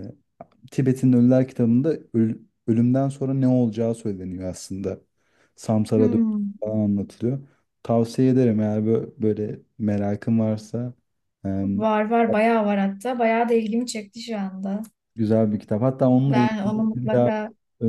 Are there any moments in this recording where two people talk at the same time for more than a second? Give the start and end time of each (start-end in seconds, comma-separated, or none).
16.1-17.3